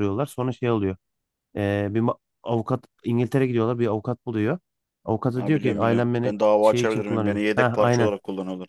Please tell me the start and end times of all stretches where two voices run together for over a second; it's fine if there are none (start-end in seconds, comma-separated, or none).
5.3-8.1